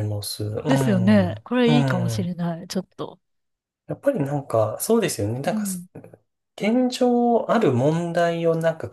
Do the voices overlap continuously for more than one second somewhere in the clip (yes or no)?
yes